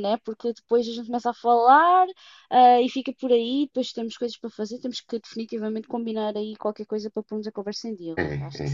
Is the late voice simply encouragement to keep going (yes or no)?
no